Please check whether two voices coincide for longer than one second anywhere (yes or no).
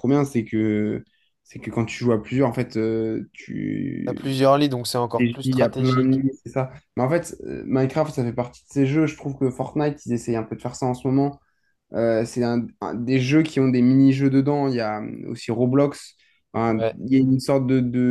yes